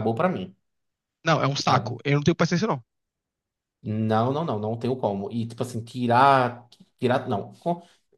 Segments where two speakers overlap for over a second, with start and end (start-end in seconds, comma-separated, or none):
none